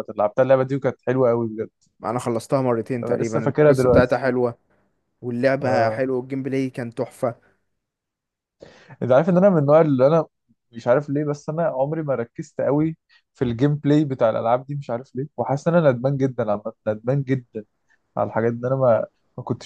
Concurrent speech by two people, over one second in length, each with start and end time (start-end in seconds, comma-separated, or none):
3.0-4.2